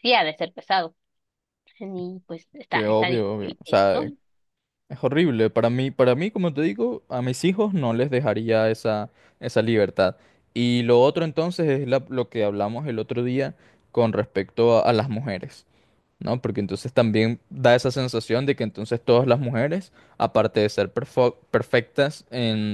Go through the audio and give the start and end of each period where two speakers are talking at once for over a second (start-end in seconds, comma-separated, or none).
2.7-4.0